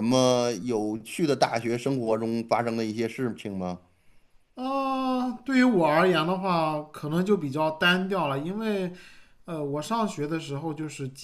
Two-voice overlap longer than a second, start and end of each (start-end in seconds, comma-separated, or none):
none